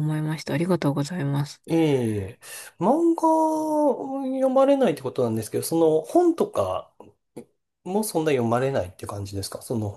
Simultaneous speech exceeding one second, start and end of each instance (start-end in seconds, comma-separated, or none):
none